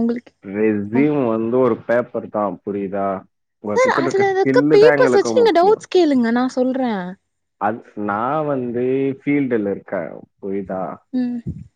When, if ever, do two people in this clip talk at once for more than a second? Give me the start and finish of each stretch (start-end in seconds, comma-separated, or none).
3.7-5.8